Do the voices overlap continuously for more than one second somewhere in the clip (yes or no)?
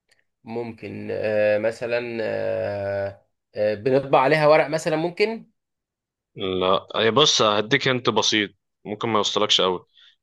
no